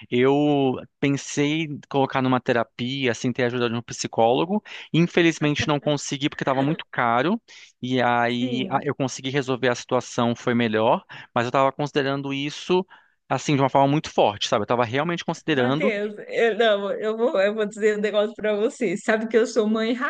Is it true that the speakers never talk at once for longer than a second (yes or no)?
yes